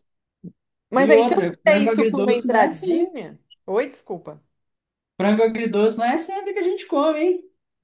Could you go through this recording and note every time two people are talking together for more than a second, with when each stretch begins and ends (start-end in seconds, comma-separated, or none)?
1.0-3.1